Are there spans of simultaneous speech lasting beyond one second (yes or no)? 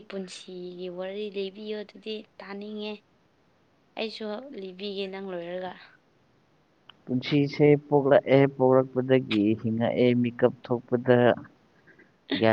no